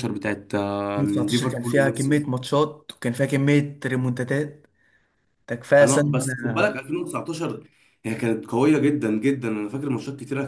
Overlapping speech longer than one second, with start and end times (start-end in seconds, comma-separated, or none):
1.0-2.2